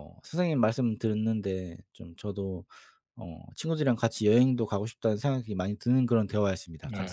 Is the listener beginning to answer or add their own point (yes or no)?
yes